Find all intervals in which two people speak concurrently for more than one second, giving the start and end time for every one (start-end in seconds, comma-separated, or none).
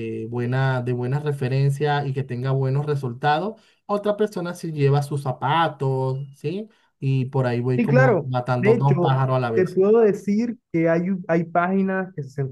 7.8-9.8